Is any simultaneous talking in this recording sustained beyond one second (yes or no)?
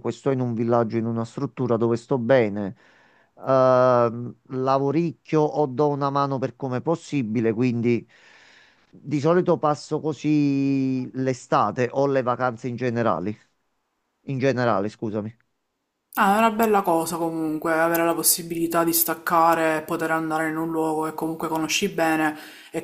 no